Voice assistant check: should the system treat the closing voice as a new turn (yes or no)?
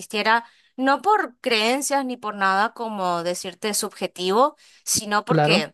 no